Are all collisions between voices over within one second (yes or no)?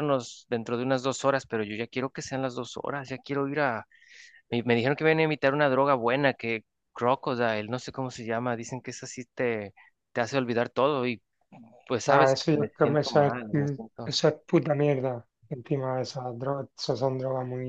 no